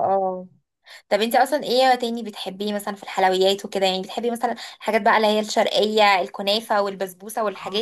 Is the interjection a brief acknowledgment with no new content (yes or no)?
no